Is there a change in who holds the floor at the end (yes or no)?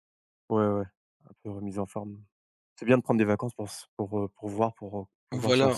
yes